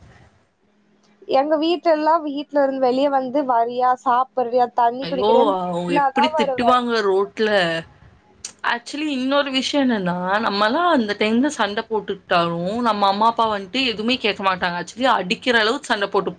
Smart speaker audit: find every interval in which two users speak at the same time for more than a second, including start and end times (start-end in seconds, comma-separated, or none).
none